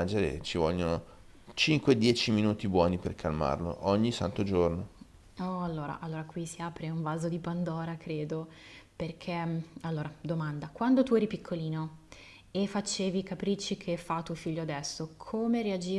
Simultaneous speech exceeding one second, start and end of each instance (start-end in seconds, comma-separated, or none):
none